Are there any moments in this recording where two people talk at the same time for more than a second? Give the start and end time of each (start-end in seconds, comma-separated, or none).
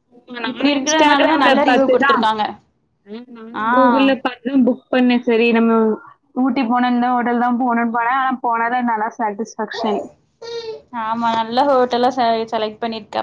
0.5-2.2